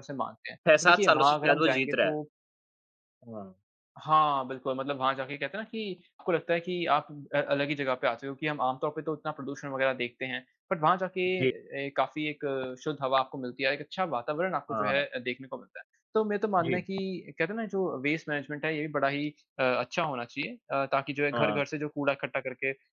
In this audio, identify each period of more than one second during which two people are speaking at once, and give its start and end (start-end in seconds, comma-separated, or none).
0.7-2.2